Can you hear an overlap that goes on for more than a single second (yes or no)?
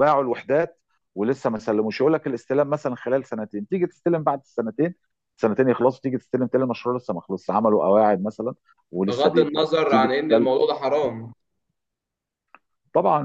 yes